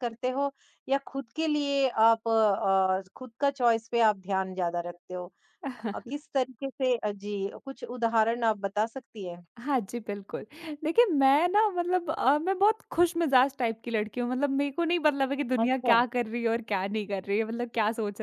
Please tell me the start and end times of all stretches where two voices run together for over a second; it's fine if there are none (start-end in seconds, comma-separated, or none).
none